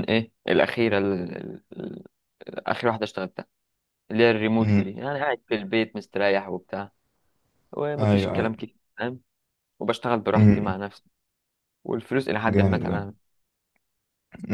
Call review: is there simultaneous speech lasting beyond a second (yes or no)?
no